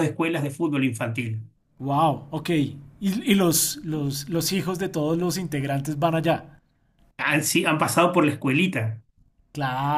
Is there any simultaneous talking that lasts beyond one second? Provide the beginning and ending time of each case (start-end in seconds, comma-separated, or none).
none